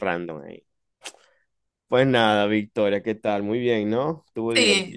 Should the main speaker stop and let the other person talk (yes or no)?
yes